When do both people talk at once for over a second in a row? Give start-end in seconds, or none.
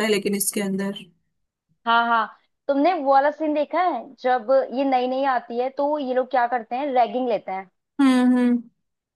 none